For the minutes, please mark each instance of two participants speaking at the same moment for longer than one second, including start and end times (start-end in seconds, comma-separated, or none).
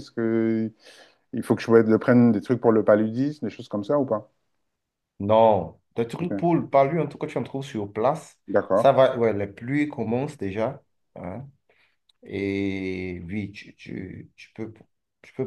none